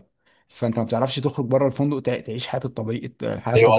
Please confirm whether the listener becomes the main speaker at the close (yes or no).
yes